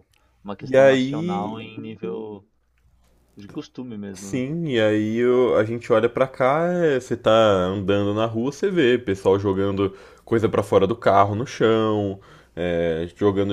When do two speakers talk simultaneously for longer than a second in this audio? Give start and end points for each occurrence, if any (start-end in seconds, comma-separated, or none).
0.6-1.8